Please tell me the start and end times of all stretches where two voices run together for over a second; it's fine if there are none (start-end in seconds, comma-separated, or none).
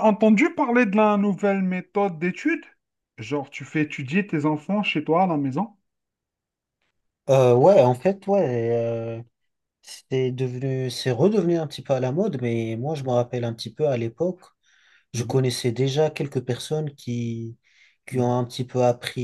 none